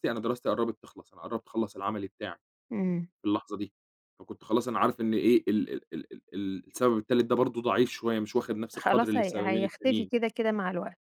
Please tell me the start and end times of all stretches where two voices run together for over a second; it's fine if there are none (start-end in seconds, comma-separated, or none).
8.8-10.1